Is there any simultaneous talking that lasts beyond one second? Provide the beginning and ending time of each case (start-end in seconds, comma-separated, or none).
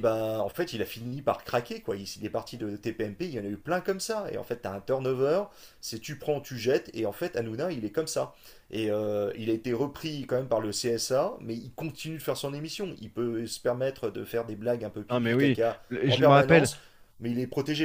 15.1-16.7